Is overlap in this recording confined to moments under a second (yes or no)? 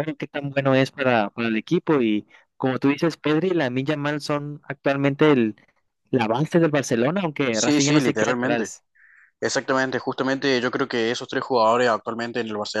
no